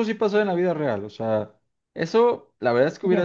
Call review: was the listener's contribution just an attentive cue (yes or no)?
yes